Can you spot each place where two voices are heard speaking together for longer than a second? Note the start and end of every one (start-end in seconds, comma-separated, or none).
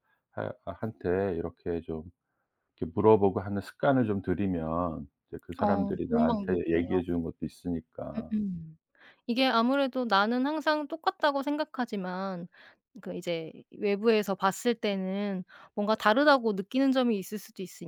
5.6-7.0